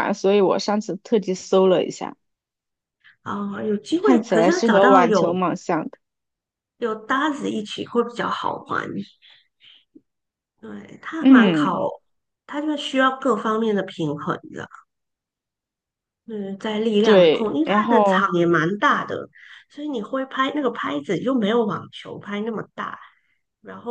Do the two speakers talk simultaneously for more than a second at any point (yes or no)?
yes